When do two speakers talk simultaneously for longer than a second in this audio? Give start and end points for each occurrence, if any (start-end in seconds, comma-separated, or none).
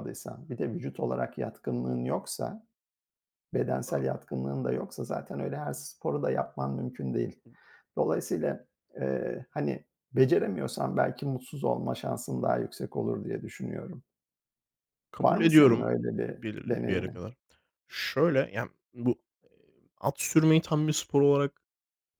15.2-17.2